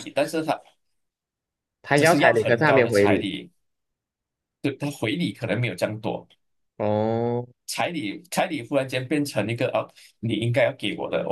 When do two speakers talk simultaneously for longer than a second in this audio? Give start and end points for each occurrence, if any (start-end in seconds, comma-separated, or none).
1.9-3.3